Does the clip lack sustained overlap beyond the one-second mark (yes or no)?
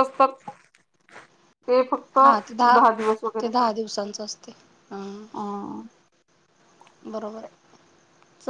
yes